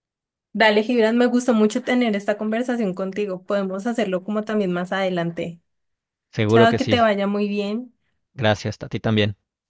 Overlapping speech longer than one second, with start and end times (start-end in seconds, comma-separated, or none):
none